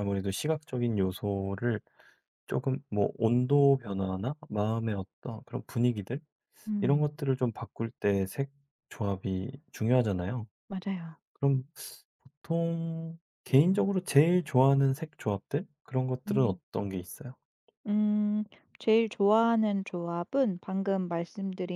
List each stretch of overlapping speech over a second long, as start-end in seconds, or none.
none